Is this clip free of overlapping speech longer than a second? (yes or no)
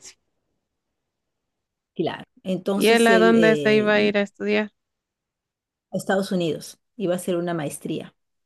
no